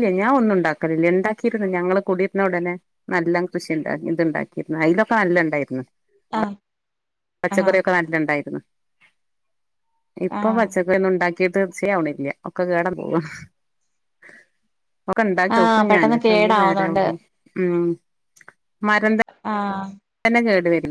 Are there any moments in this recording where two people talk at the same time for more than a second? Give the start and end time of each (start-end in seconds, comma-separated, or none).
15.6-17.0